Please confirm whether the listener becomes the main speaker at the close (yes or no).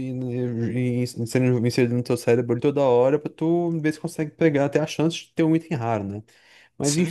no